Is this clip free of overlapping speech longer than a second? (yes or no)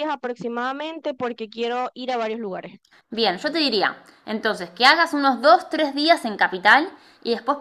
yes